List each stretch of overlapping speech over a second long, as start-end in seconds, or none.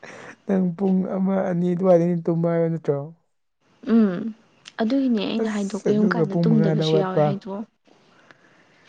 5.4-7.2